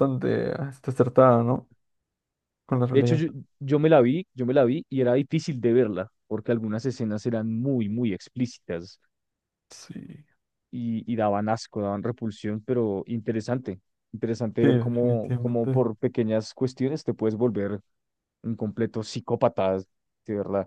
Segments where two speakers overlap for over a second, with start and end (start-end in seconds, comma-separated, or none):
14.6-15.8